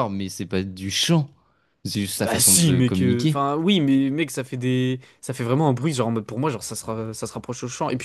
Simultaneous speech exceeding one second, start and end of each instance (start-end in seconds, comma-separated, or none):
2.2-3.4